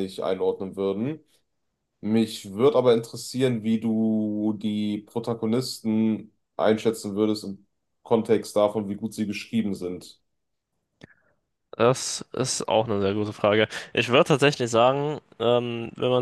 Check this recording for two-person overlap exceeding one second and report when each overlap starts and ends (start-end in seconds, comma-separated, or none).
none